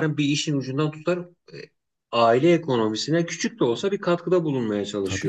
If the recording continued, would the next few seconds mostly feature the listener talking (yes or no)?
yes